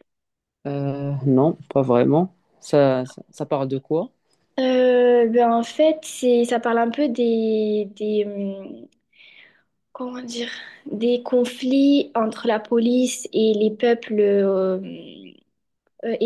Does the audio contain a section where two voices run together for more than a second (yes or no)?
no